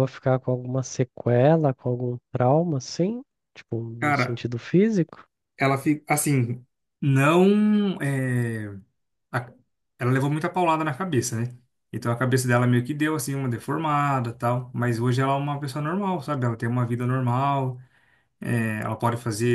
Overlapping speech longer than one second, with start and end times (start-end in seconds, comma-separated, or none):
none